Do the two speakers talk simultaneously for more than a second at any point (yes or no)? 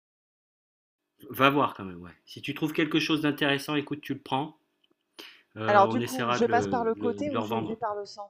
yes